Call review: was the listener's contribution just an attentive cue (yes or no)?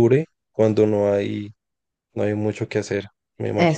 no